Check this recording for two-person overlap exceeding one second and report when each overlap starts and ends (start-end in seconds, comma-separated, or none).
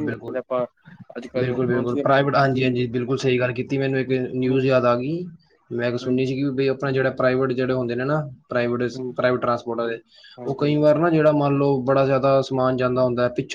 1.4-2.7